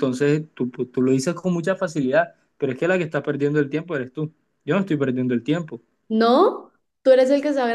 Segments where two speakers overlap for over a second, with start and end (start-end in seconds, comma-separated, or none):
none